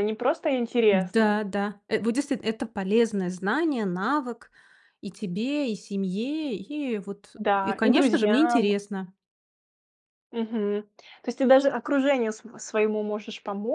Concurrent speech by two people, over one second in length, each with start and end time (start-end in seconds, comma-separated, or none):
7.4-8.7